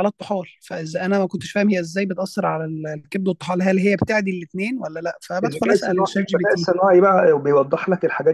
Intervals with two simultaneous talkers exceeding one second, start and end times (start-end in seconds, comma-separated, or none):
5.4-6.7